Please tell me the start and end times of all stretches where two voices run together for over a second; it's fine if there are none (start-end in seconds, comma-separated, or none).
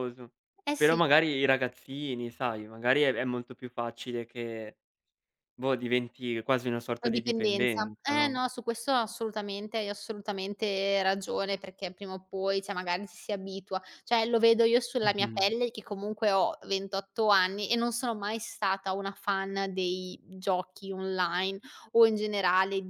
7.0-8.4